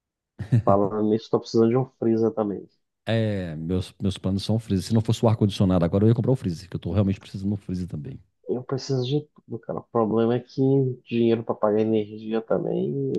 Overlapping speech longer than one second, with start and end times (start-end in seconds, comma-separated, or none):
none